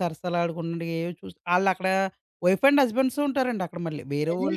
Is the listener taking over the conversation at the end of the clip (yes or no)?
yes